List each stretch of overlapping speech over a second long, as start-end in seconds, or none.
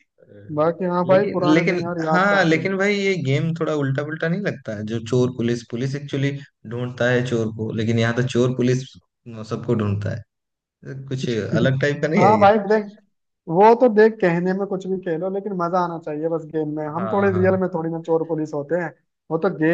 1.1-2.8